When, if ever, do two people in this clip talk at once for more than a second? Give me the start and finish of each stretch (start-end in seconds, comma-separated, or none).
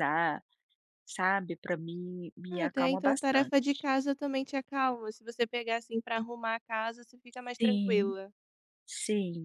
2.5-3.9